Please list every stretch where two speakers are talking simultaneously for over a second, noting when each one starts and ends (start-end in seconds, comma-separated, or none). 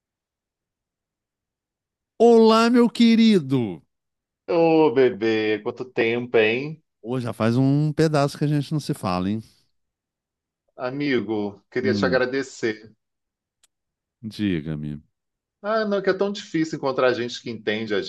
none